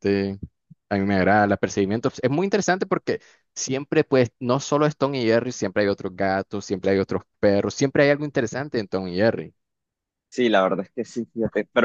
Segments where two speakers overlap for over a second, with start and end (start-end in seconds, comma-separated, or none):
none